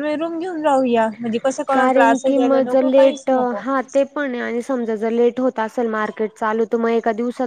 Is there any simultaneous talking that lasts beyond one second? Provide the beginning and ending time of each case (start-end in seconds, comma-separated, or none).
1.7-3.6